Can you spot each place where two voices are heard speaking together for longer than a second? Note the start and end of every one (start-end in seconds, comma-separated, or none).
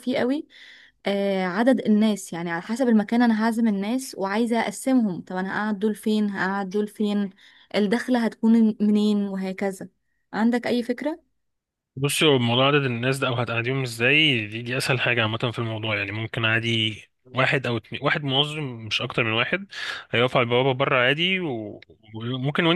none